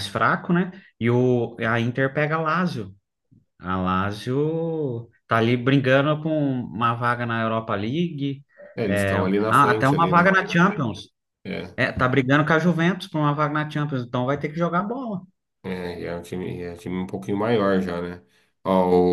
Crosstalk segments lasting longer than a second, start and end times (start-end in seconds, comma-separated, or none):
8.9-10.3